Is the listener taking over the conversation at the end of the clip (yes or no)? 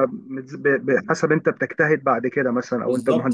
yes